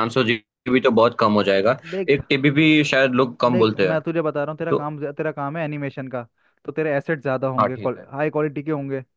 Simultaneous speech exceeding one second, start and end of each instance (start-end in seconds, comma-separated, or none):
none